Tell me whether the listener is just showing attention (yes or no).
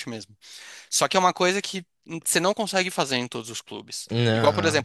yes